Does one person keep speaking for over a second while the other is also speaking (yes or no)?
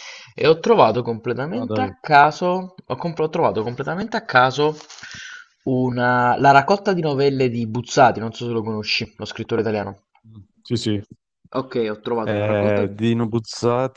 no